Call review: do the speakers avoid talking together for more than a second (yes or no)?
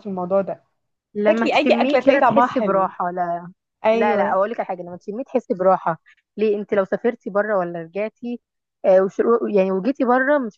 no